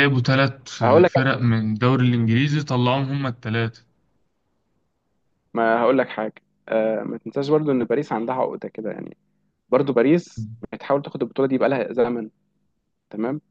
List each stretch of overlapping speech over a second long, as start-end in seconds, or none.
none